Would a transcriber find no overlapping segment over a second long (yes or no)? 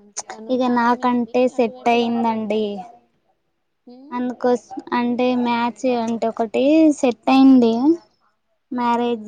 no